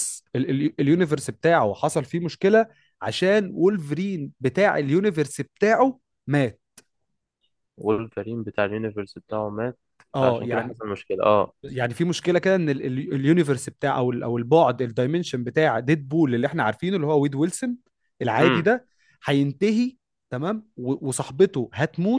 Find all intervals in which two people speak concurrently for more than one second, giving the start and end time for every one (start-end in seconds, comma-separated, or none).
none